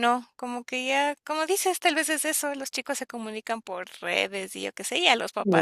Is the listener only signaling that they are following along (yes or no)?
no